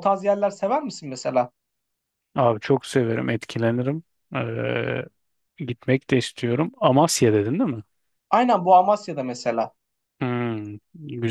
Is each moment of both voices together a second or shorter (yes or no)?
yes